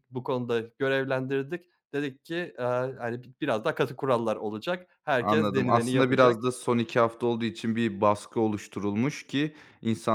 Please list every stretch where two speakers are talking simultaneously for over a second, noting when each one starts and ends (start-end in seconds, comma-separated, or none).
5.2-6.4